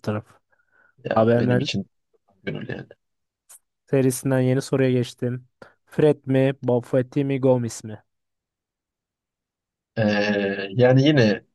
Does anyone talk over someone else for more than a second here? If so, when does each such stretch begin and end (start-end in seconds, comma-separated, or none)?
none